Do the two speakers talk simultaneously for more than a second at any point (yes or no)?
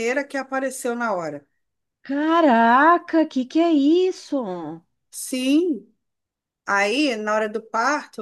no